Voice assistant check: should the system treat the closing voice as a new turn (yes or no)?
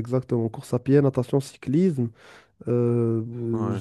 no